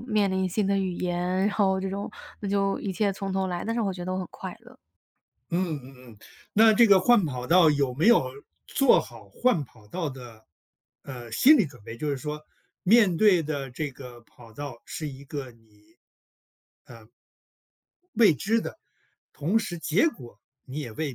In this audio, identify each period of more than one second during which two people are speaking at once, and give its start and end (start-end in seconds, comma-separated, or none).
none